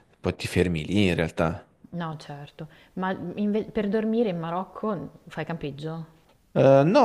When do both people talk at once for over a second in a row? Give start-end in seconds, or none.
none